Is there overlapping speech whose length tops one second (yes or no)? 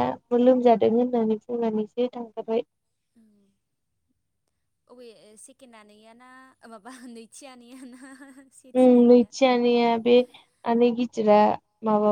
no